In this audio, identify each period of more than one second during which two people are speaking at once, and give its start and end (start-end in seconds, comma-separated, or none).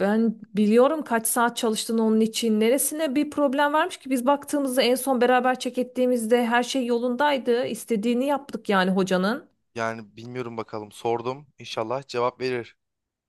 none